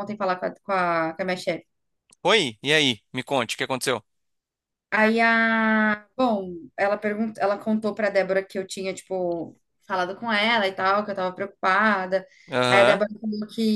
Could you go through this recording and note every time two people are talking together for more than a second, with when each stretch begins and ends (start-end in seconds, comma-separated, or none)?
none